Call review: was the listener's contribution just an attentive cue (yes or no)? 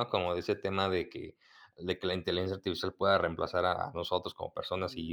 no